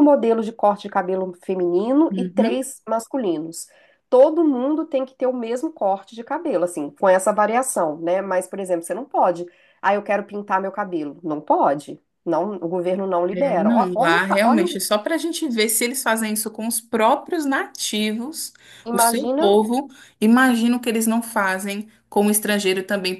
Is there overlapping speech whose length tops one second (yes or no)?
yes